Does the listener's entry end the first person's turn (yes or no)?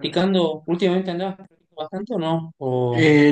yes